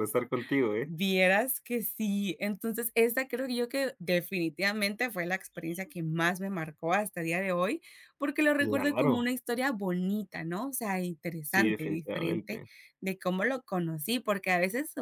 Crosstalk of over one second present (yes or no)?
yes